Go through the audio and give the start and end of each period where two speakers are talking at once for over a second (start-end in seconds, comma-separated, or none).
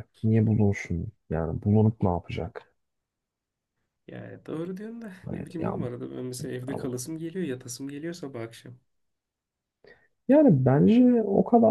none